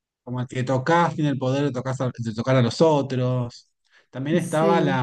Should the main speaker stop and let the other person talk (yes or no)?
no